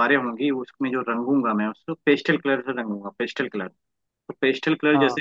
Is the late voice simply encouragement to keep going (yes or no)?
yes